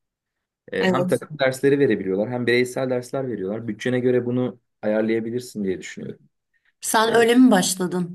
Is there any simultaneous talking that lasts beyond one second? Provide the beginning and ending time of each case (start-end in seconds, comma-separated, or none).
none